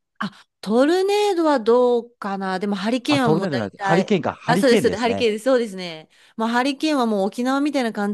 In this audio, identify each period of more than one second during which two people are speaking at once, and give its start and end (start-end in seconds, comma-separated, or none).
3.1-5.3